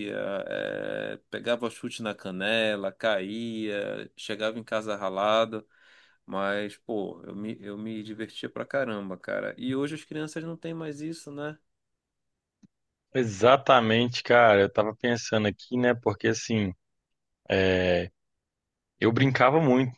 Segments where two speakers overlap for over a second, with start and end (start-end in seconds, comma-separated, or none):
none